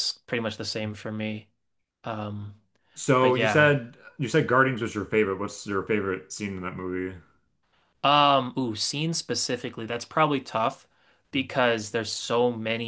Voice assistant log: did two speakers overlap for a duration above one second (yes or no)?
no